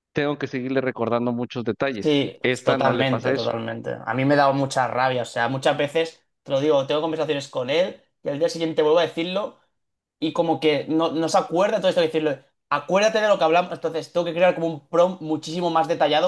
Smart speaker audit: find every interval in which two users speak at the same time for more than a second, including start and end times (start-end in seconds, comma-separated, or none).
1.9-3.5